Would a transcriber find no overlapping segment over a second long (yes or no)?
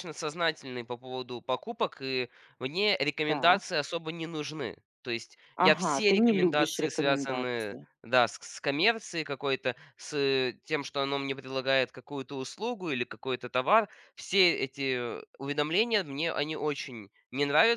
no